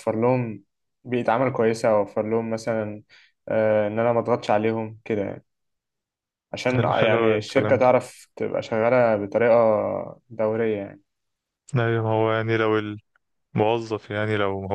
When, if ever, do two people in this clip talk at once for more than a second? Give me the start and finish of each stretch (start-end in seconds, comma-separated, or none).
6.7-7.9